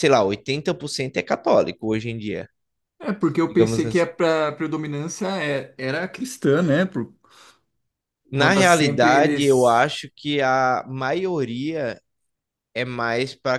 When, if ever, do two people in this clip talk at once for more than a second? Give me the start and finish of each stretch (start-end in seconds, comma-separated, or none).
8.3-9.9